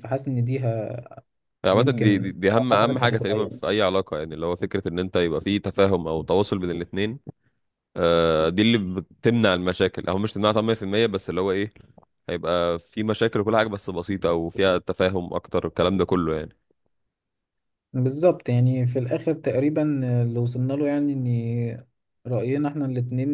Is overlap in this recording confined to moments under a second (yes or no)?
no